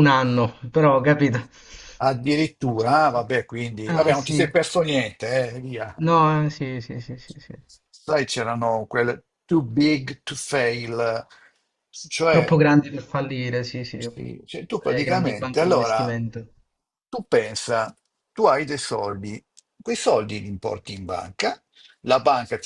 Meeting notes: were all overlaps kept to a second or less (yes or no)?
no